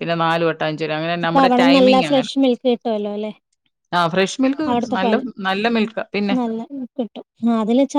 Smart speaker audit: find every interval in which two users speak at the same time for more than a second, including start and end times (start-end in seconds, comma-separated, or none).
none